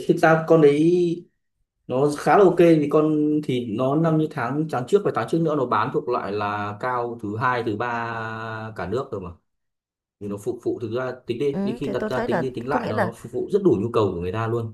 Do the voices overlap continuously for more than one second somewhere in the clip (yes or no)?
yes